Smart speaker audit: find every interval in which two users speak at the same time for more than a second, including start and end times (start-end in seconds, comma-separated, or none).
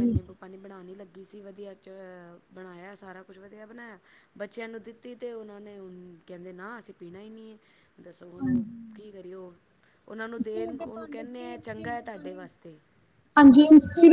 10.4-12.4